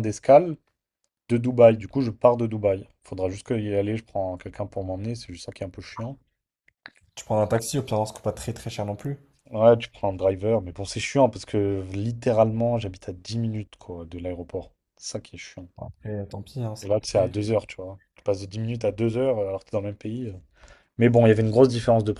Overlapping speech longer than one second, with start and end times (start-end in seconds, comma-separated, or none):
none